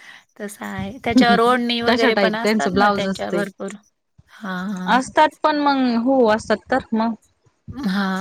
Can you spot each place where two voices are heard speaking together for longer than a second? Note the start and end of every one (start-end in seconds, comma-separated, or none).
1.9-3.4